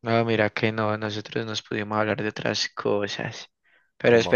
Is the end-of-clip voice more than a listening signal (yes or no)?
no